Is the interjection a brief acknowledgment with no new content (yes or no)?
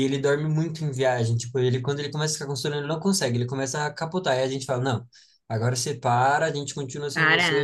yes